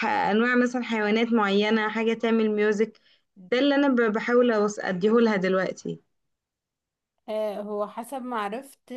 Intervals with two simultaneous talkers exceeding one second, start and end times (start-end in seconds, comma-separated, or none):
none